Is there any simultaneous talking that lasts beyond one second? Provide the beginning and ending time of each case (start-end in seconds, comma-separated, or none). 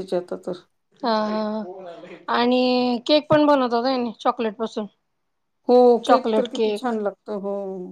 none